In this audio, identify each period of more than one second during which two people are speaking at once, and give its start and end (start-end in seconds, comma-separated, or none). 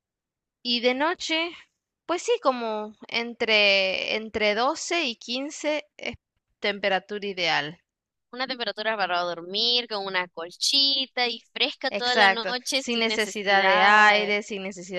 11.9-14.4